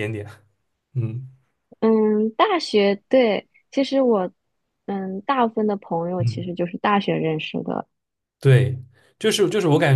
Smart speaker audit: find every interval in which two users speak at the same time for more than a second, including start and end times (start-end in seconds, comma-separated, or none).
none